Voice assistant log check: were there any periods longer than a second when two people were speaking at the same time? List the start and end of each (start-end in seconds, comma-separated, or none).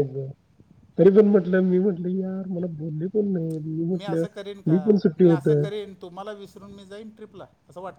none